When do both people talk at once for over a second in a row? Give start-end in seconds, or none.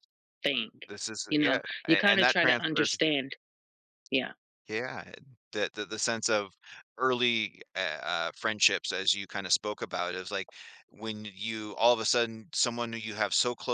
1.3-2.9